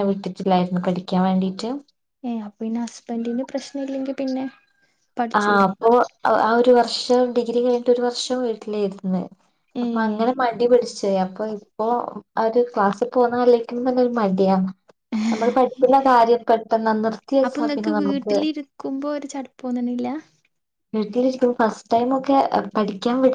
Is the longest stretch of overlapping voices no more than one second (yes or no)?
yes